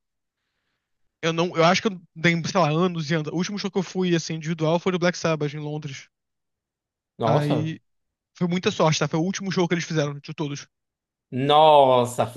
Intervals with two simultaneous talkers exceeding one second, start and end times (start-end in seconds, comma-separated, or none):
none